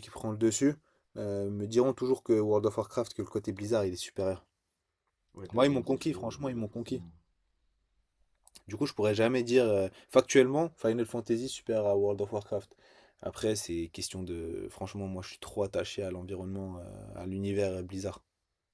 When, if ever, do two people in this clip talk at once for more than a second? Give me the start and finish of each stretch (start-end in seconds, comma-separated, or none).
5.5-7.0